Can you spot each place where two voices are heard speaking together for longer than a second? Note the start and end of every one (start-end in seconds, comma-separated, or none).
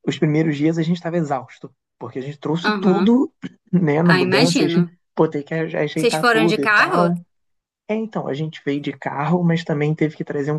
5.9-7.1